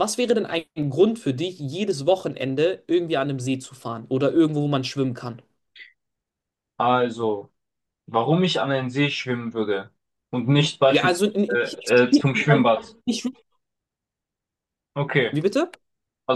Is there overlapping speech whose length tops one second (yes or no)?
yes